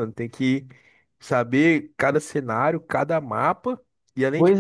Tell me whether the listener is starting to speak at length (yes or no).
no